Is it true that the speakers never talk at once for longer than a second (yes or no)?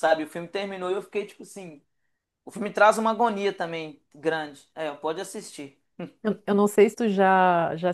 yes